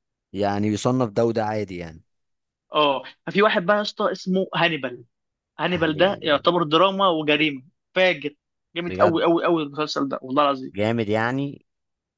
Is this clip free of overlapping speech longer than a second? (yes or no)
yes